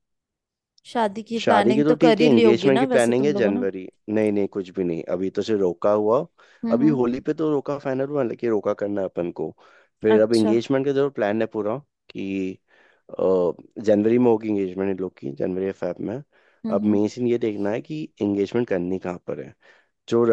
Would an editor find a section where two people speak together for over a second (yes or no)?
yes